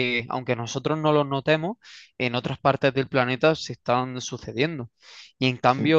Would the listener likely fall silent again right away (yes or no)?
yes